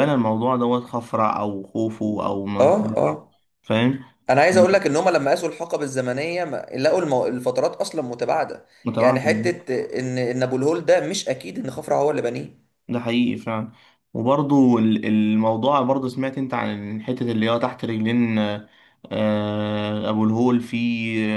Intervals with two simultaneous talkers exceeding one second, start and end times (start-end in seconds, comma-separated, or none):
none